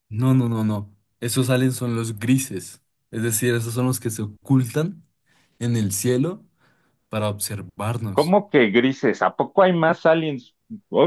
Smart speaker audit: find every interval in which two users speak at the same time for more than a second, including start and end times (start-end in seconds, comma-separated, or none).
none